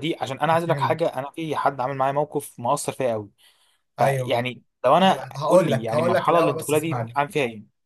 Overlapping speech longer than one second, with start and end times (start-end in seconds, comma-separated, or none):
5.0-7.2